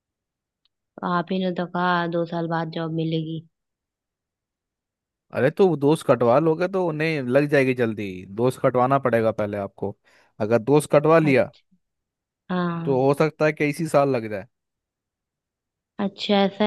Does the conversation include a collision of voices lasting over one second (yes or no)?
no